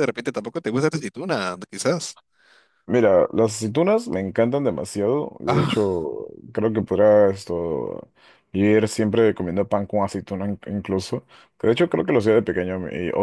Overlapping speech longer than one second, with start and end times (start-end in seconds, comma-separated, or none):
none